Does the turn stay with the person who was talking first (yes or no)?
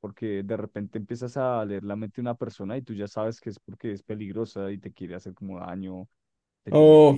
no